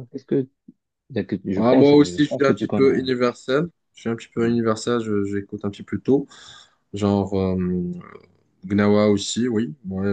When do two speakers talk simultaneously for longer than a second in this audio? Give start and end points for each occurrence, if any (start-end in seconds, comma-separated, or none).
1.6-3.1